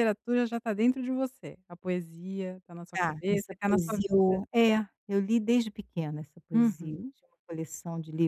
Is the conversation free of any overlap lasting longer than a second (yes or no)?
no